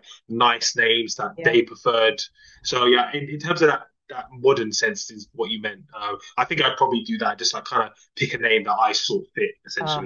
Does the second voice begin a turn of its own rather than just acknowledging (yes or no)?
yes